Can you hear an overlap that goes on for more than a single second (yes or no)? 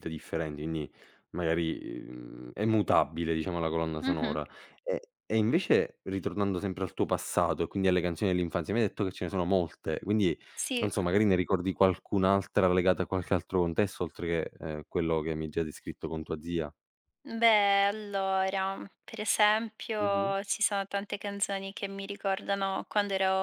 no